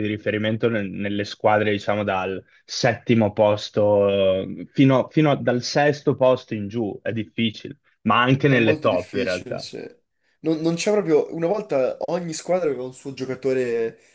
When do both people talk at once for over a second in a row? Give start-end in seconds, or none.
8.4-9.7